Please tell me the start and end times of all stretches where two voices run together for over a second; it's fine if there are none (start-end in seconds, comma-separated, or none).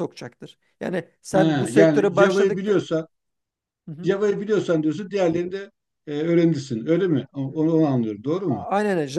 1.3-2.8